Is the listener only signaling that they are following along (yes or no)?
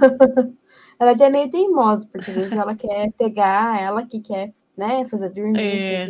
yes